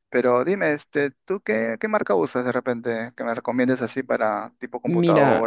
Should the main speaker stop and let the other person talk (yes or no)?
yes